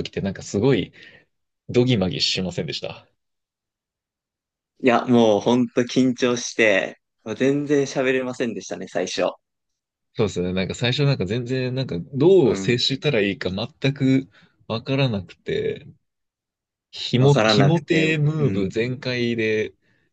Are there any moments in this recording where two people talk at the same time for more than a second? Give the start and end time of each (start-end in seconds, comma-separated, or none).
17.2-18.7